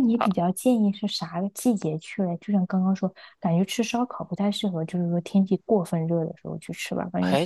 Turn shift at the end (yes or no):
yes